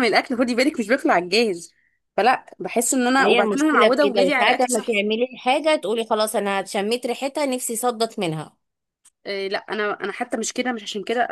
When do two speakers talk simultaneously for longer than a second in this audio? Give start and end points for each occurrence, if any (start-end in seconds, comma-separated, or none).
3.2-5.0